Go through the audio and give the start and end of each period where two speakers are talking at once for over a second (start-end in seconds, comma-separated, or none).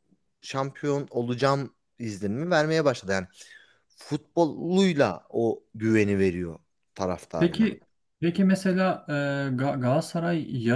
none